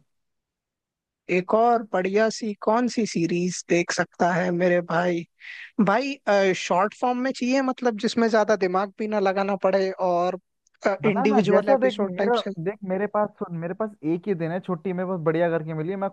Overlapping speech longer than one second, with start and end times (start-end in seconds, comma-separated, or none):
11.1-12.5